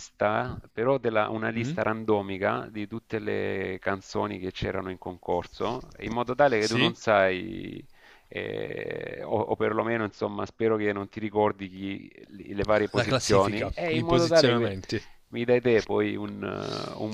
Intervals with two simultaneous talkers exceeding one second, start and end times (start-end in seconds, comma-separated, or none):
12.9-14.8